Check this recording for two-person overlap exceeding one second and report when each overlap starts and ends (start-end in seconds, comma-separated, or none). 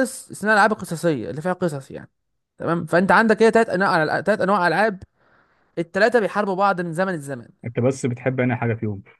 none